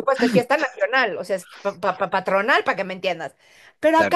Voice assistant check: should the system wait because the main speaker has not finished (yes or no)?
yes